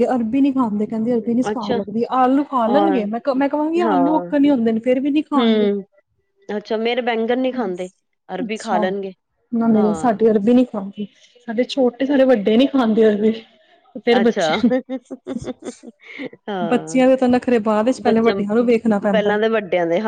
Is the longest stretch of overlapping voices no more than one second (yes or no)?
yes